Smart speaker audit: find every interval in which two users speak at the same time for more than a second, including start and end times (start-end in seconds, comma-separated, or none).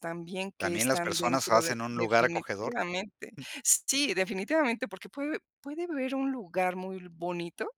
0.6-2.7